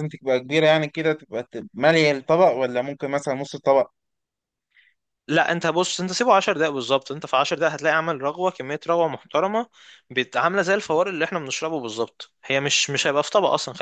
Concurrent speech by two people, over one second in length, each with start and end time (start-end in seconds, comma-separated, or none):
none